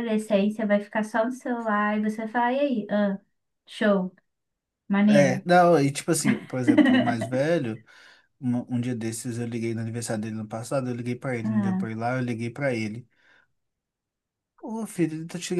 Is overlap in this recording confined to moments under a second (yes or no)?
yes